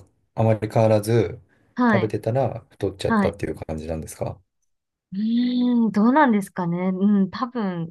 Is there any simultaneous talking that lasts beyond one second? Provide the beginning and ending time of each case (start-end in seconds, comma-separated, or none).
none